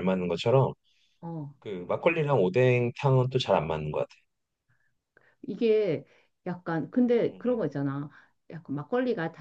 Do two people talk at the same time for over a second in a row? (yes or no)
no